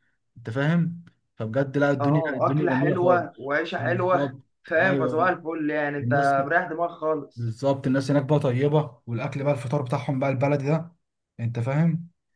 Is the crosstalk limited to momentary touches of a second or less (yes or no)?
no